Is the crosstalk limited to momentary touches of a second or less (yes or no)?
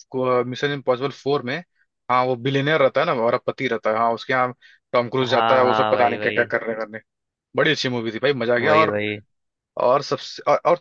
no